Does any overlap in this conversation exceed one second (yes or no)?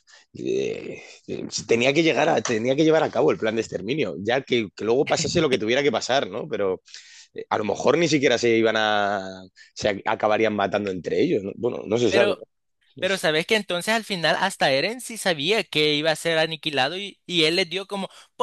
no